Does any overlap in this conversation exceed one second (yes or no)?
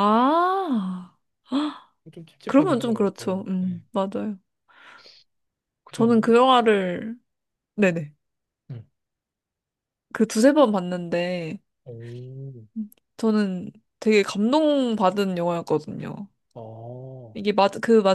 yes